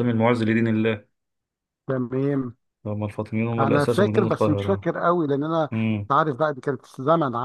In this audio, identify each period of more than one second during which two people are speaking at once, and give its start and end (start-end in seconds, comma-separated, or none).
3.6-4.9